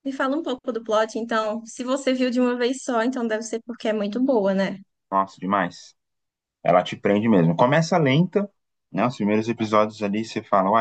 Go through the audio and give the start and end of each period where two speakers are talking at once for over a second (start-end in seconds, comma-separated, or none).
none